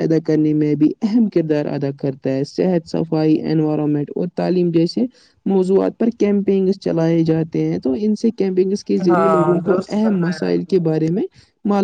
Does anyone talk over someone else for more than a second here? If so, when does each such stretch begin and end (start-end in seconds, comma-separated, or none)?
9.1-10.7